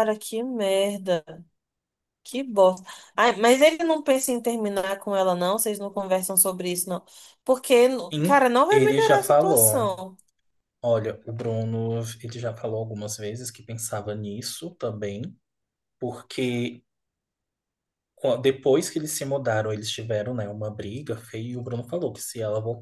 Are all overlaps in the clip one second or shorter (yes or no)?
no